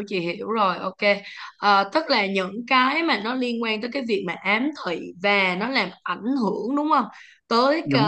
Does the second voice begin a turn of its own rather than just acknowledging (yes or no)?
no